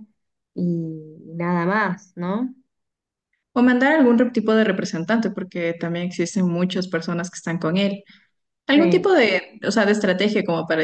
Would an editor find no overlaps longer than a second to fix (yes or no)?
yes